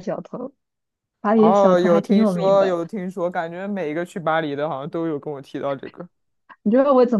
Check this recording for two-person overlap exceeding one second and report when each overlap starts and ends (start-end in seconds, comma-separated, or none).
1.3-2.8